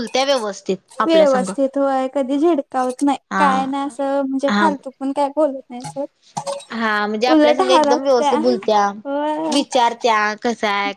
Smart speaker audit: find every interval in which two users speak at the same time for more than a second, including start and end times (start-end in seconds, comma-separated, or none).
none